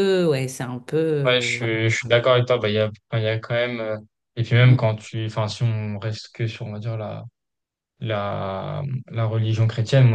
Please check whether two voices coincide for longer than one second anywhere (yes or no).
no